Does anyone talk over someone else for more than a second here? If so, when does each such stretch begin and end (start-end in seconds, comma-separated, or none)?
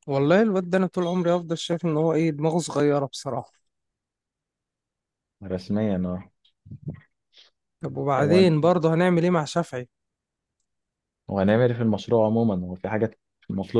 none